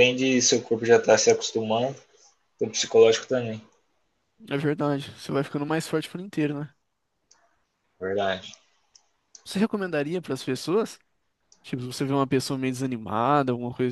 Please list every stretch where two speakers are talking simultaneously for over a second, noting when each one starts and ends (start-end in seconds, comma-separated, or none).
none